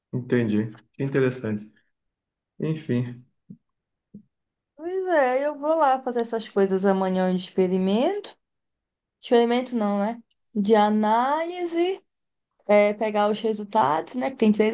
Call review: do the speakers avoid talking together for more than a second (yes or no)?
yes